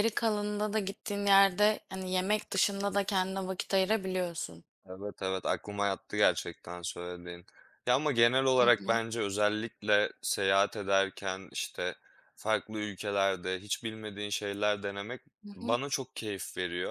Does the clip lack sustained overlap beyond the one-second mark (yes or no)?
yes